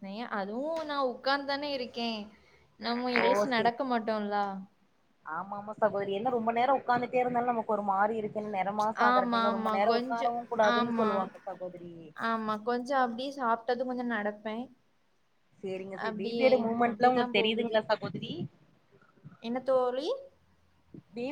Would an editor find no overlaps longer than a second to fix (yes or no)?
yes